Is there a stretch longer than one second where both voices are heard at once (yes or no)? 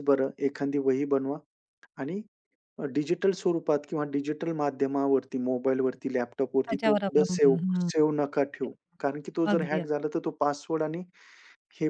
yes